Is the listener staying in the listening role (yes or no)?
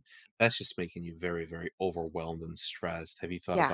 yes